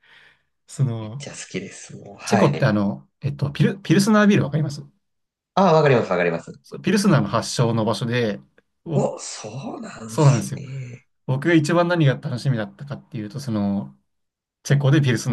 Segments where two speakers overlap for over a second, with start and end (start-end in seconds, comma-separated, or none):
none